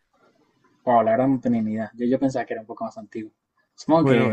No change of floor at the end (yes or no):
no